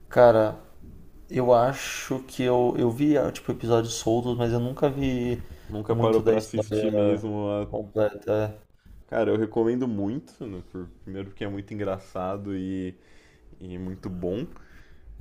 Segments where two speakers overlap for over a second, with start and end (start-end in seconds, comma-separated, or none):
5.9-7.2